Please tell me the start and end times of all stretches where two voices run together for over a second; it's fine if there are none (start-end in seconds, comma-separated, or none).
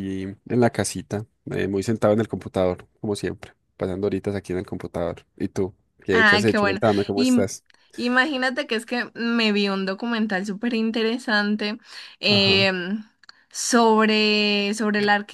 6.1-7.5